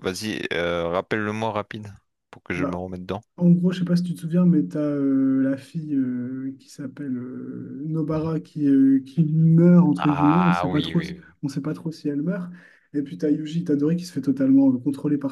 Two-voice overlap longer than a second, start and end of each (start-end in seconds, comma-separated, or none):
10.0-11.3